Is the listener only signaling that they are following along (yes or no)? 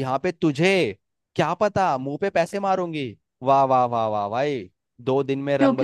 no